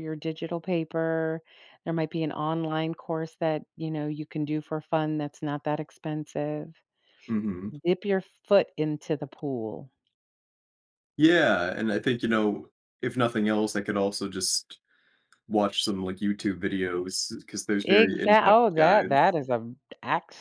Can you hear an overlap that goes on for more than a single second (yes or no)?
yes